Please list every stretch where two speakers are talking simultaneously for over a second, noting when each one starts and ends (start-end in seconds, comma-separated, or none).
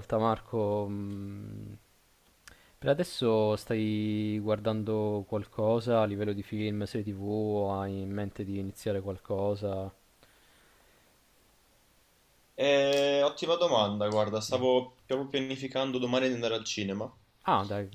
none